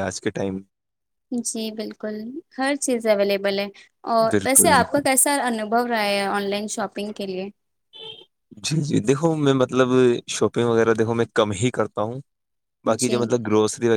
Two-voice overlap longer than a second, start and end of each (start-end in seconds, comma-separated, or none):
none